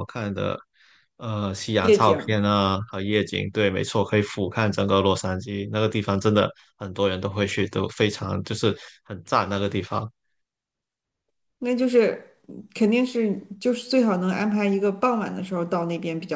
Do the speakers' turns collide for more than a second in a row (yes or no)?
no